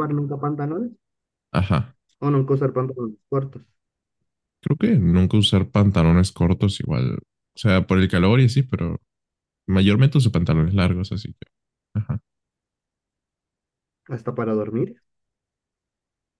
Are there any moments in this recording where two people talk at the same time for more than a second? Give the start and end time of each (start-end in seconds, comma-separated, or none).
none